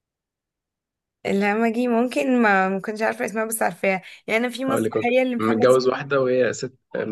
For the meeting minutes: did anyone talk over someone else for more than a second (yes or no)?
yes